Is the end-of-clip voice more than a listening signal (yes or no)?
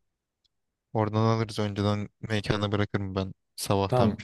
yes